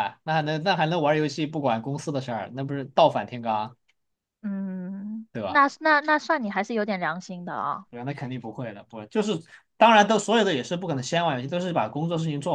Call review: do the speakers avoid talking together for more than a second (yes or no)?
yes